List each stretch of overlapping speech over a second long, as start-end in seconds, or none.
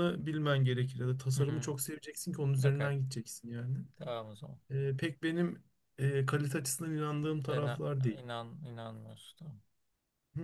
none